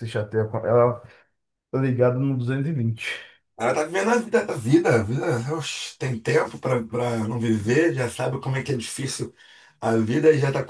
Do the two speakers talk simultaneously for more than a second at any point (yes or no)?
no